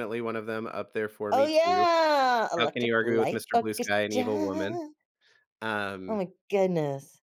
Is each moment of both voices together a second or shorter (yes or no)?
no